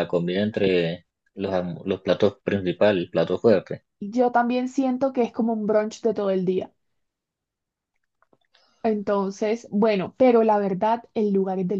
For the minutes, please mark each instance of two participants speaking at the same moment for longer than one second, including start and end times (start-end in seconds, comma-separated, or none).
none